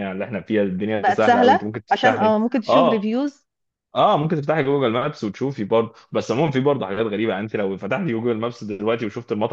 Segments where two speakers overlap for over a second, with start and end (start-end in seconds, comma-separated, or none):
1.0-3.0